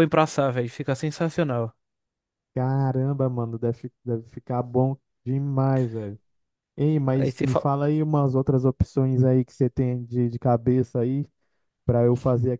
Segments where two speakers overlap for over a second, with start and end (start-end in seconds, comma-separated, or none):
none